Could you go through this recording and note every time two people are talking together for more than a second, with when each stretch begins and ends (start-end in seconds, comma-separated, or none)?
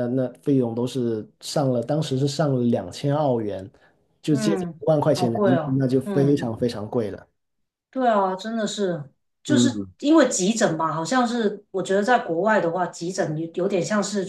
4.3-6.6